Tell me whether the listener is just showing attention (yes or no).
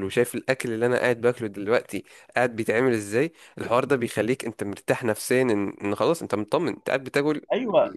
no